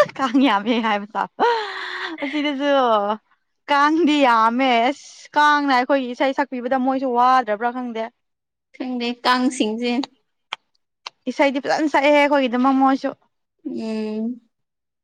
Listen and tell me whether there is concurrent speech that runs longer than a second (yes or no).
no